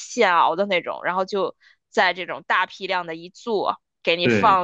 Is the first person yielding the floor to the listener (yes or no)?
no